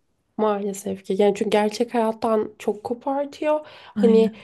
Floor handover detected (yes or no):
no